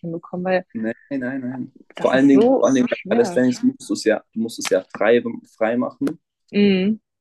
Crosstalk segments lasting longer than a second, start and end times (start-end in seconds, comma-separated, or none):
1.9-3.5